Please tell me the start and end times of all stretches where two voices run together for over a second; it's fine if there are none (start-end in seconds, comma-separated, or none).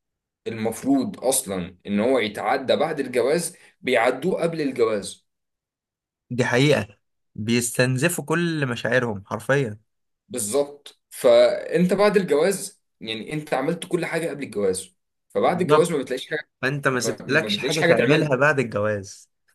17.0-18.3